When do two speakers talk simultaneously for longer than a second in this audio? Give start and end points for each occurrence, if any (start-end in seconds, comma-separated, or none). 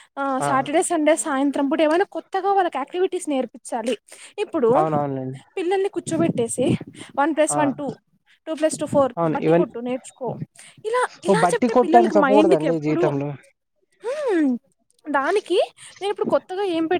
11.3-13.0